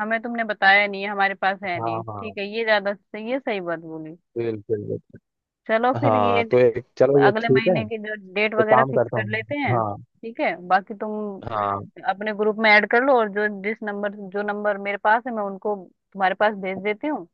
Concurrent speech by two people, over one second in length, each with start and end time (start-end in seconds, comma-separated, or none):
8.4-10.0